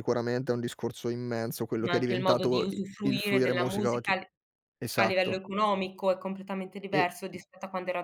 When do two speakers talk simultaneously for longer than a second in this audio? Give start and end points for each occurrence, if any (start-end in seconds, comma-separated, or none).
1.8-4.1